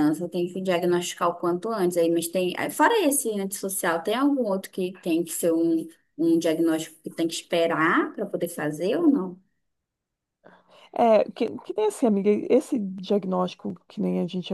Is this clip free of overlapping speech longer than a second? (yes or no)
yes